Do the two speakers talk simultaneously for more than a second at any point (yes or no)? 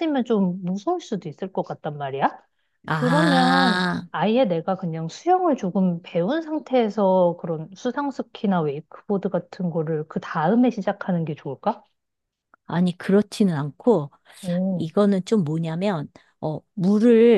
yes